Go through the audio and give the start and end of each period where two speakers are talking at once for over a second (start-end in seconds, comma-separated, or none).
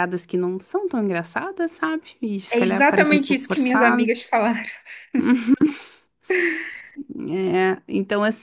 2.5-4.1